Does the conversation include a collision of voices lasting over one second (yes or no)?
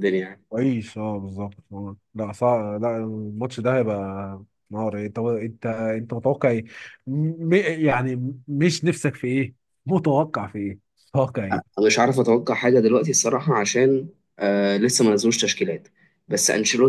no